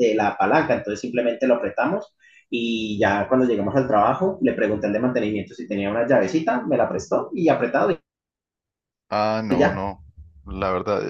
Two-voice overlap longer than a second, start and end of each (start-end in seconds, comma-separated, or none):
none